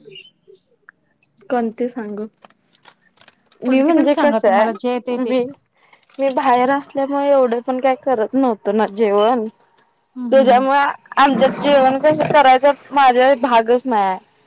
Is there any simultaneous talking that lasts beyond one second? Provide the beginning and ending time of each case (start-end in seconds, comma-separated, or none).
3.7-5.3